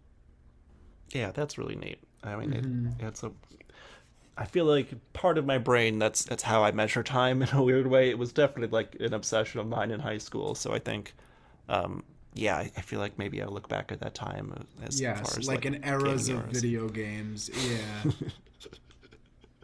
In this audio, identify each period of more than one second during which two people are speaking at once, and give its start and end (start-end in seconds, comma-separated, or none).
14.9-16.6